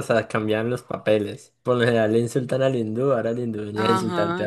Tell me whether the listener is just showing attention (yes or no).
no